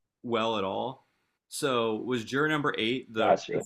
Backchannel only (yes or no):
yes